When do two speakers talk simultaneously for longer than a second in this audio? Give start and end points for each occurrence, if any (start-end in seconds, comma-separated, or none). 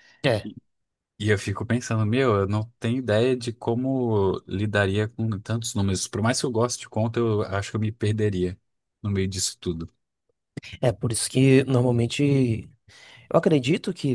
none